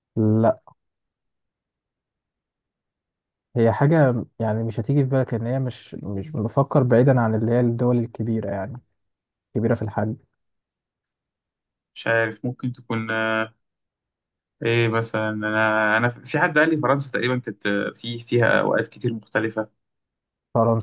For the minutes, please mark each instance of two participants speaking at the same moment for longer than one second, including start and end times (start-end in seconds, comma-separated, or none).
none